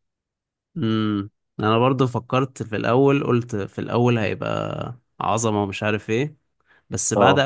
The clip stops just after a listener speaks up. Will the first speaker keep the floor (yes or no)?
yes